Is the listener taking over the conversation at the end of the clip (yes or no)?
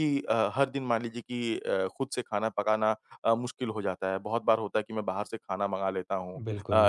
no